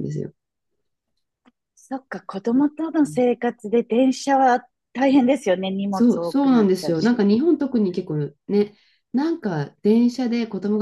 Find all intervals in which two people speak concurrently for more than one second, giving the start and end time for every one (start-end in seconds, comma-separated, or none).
5.9-7.2